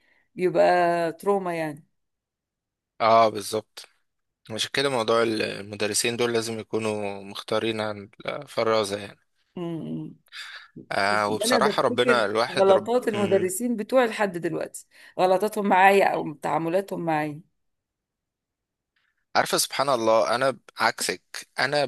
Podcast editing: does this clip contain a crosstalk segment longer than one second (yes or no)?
yes